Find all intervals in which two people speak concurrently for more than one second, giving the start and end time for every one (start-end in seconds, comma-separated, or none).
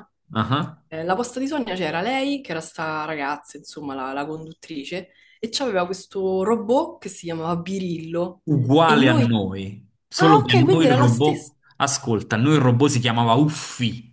10.1-11.5